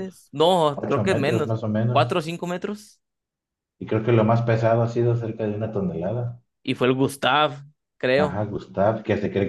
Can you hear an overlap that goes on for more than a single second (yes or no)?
yes